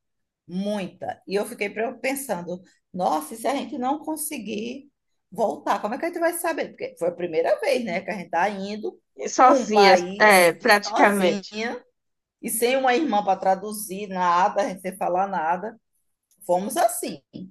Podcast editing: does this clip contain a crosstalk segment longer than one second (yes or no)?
yes